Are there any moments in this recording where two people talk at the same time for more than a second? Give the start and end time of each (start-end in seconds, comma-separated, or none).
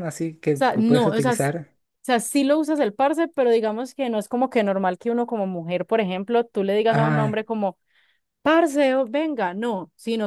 0.5-1.8